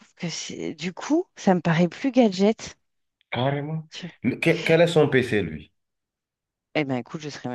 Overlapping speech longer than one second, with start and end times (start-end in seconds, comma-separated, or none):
none